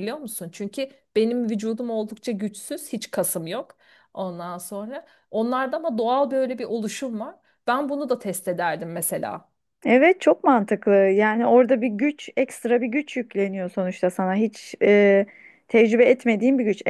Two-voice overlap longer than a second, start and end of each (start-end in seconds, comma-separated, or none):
none